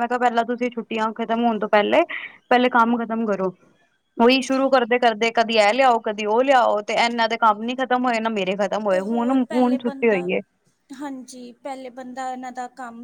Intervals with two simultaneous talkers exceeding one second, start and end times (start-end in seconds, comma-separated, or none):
8.9-10.3